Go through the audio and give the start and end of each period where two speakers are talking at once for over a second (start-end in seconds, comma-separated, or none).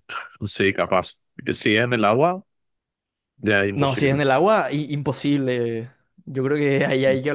none